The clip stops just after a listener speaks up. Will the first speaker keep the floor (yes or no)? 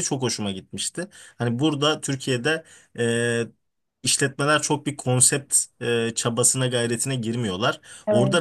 yes